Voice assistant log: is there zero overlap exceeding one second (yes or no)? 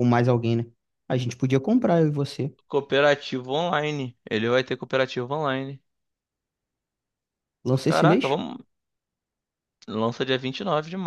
yes